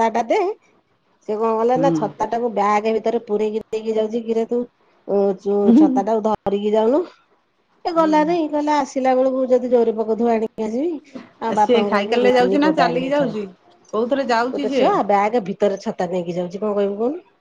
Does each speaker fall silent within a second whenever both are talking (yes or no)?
no